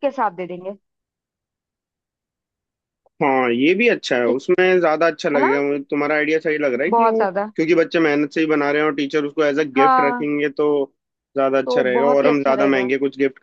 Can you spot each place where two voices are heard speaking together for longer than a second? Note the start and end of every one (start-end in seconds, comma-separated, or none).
11.7-12.9